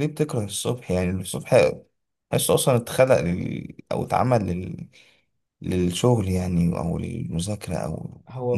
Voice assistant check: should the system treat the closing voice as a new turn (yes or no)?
yes